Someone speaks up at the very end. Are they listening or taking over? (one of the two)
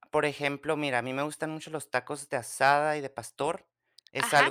taking over